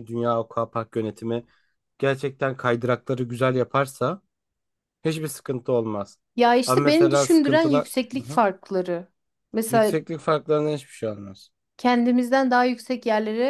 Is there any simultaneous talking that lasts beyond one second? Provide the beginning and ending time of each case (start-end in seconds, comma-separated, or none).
6.7-8.4